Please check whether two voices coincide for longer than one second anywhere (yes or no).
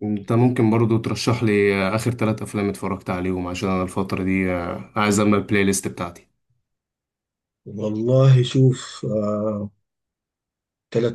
no